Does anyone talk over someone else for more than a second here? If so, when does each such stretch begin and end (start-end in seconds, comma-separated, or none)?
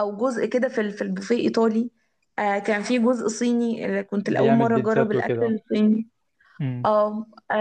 4.2-5.5